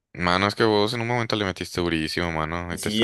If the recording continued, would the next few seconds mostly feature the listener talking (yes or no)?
yes